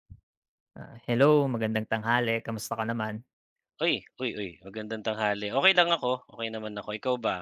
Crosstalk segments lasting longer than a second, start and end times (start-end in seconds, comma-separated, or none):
none